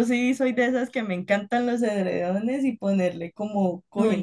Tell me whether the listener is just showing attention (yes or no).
no